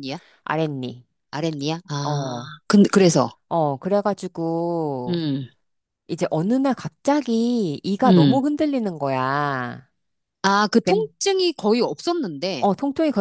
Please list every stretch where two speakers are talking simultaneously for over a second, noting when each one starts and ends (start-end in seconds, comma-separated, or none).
none